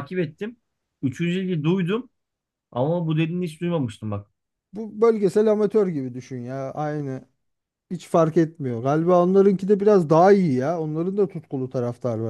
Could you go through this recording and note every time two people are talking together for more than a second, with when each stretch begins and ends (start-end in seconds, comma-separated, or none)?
none